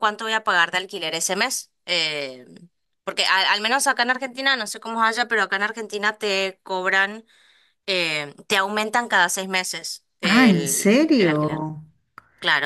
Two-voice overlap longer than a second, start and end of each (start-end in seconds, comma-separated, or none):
10.2-11.7